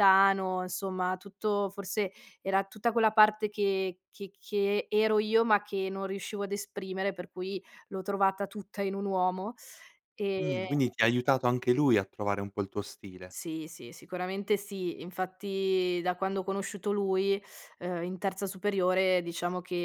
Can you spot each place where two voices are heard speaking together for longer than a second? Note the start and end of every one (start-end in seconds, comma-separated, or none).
none